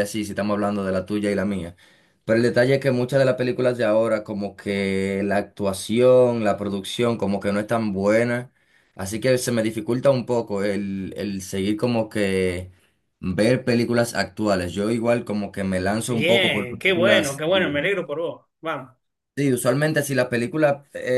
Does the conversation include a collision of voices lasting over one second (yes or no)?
yes